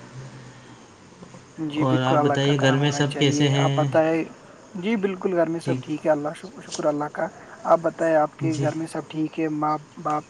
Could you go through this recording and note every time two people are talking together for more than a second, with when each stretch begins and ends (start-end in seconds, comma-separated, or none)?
1.9-3.9